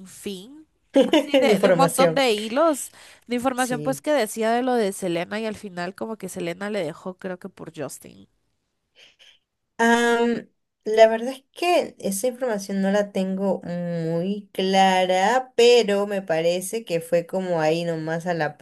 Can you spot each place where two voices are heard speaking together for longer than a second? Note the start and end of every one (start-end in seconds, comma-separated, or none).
1.1-2.2